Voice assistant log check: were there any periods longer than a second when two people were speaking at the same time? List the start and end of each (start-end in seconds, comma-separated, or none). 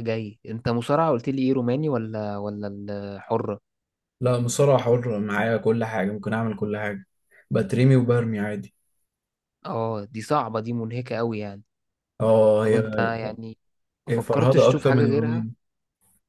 14.1-15.5